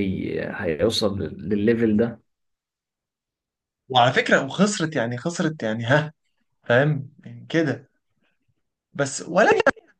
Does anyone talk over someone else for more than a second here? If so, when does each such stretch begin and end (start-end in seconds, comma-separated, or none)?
none